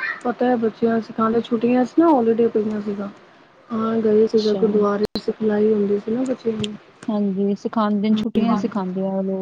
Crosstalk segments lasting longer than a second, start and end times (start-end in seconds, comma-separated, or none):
none